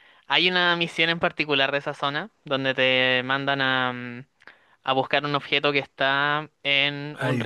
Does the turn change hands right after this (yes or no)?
no